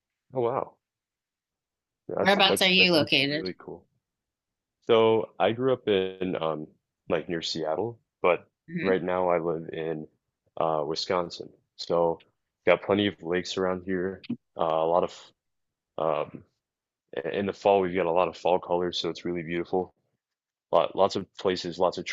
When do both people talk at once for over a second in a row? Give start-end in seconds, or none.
2.2-3.5